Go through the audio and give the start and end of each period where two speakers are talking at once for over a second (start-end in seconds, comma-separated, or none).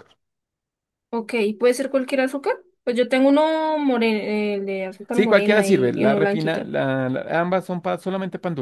5.1-6.7